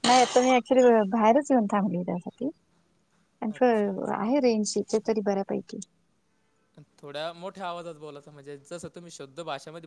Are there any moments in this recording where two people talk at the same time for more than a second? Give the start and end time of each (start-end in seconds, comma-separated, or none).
none